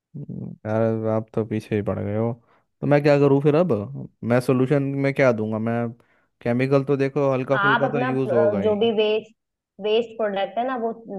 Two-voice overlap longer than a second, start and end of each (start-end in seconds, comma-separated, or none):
7.5-8.8